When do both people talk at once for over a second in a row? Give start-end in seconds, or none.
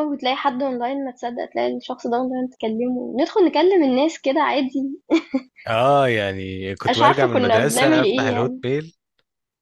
6.9-8.6